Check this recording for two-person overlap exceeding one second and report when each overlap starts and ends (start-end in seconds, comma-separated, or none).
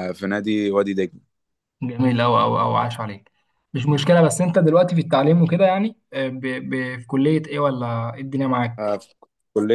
none